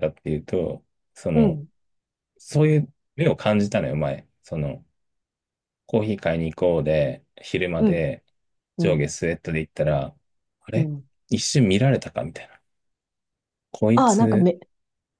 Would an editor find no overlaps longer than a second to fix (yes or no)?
yes